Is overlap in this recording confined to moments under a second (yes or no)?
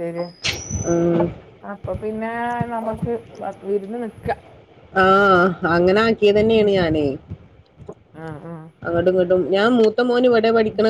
yes